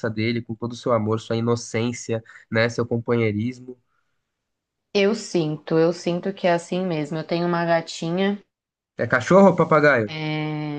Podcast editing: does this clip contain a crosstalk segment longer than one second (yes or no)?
no